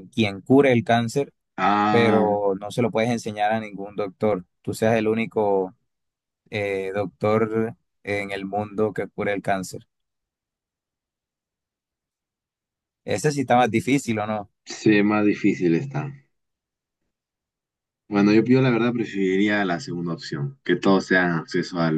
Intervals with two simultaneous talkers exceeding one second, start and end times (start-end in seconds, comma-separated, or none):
none